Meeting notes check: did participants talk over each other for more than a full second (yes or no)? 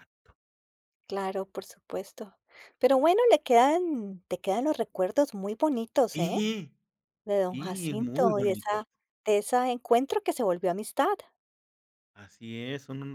yes